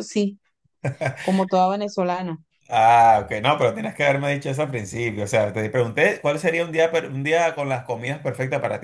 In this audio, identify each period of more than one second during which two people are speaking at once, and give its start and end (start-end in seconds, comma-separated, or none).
none